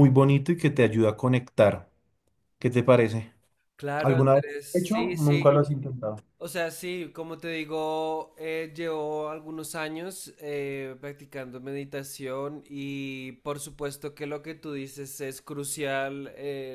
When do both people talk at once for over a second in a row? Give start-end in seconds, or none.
4.0-5.5